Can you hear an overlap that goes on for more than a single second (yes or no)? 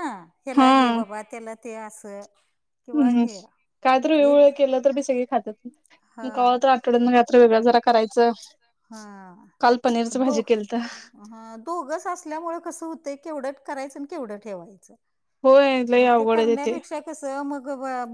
no